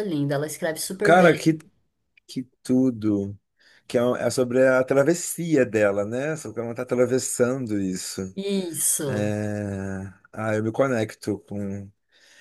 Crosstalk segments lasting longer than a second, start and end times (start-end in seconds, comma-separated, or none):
none